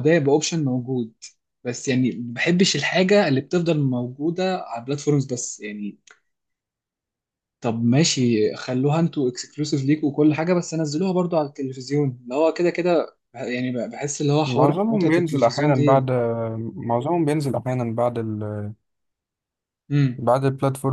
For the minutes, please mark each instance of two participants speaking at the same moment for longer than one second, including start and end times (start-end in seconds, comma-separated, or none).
14.4-16.1